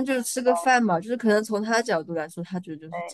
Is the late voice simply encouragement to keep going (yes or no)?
no